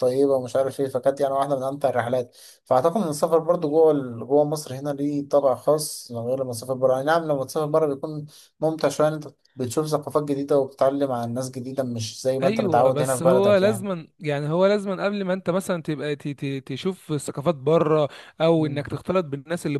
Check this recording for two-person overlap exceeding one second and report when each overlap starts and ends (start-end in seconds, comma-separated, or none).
12.4-13.9